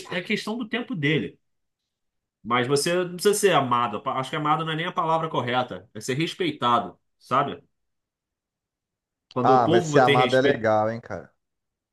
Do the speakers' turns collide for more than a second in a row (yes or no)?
yes